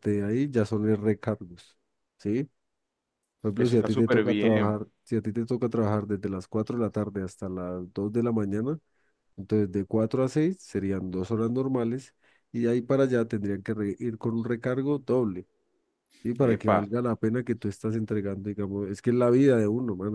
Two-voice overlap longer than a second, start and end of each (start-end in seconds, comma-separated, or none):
3.6-4.8